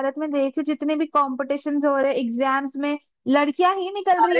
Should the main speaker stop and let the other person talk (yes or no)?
yes